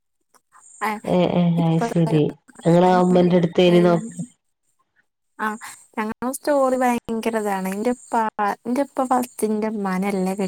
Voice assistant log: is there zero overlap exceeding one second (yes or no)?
yes